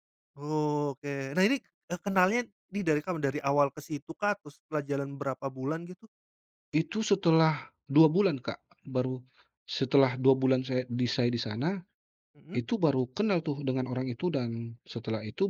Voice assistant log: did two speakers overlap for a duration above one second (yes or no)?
no